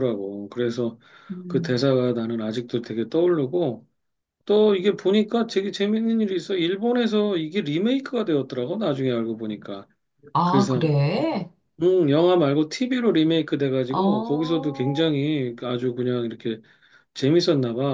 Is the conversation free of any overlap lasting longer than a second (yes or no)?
no